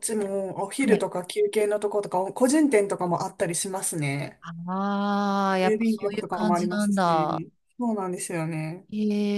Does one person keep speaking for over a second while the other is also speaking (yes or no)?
yes